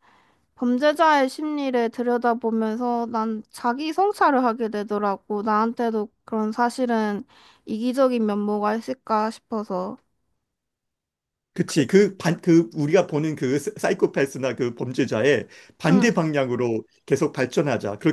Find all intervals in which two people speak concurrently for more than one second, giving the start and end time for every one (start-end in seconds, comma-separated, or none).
none